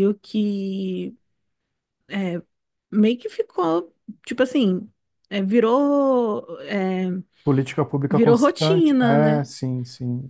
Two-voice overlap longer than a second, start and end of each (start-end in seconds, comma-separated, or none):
8.1-9.4